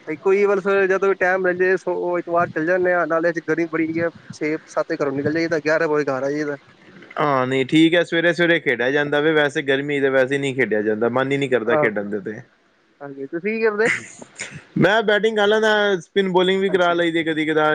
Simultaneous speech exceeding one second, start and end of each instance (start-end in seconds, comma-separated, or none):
none